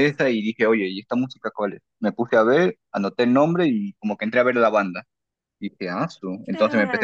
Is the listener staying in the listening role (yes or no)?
yes